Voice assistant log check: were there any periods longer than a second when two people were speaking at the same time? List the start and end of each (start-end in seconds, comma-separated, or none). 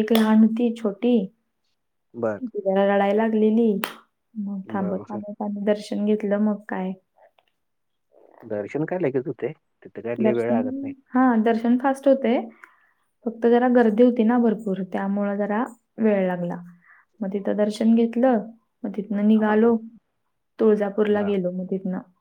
none